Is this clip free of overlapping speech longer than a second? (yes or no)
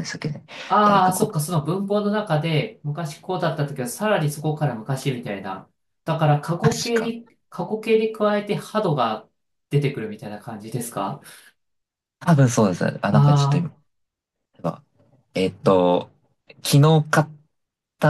yes